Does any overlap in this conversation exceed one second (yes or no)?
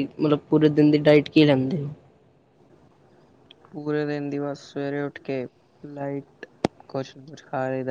no